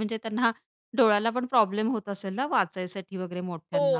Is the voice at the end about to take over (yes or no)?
yes